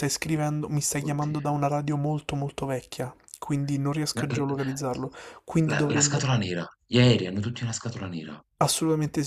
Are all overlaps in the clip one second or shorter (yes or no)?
yes